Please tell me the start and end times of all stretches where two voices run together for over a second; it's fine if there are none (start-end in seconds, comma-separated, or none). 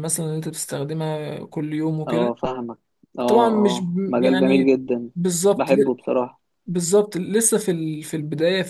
3.3-4.7